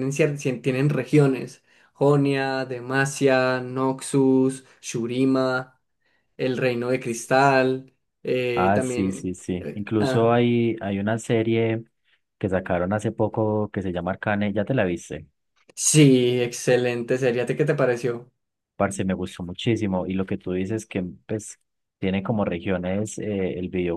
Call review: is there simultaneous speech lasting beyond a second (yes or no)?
yes